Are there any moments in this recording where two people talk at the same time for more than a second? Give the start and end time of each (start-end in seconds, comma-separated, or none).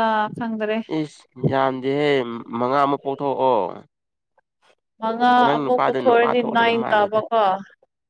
5.4-7.2